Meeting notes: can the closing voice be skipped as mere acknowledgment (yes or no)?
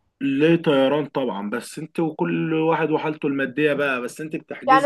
no